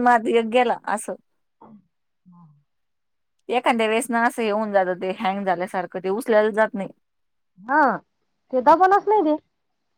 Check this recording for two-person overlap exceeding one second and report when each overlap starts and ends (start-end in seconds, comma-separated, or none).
none